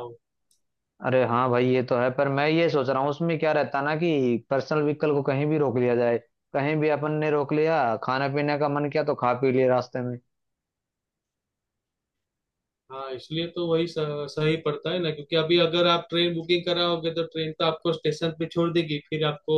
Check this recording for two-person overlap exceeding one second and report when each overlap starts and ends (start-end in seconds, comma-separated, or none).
none